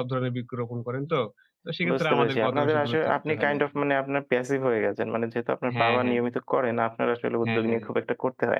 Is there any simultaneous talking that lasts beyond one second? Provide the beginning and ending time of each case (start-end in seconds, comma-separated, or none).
1.9-3.6